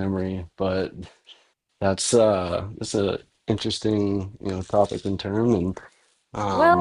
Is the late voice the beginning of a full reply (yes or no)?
yes